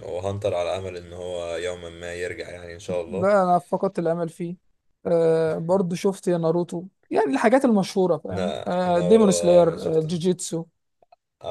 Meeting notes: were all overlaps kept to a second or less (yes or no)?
no